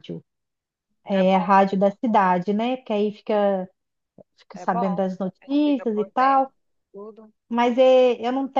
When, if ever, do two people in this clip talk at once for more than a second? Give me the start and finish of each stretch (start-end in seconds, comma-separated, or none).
4.5-6.5